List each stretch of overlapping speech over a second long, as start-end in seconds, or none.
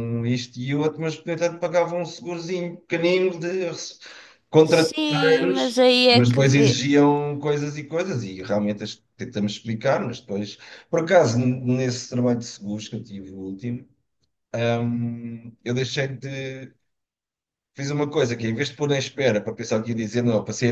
4.6-6.8